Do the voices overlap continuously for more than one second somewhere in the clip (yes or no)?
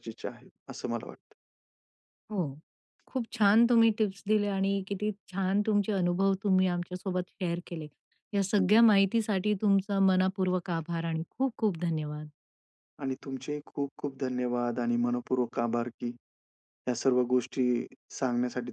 no